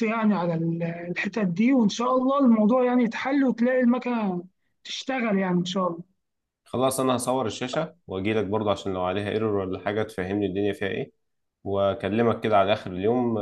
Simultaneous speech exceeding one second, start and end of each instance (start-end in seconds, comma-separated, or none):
none